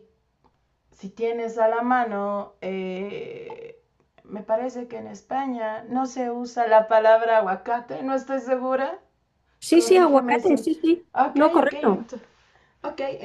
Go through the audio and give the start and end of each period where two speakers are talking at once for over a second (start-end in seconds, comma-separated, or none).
9.7-12.1